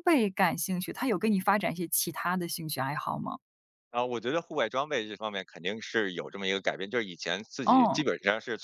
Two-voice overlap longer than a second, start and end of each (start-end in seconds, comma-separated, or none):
none